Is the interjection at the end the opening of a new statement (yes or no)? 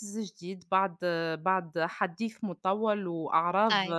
no